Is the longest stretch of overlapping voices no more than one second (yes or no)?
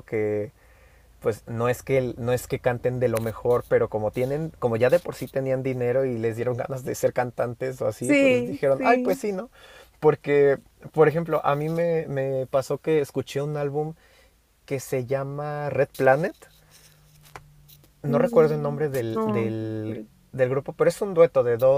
no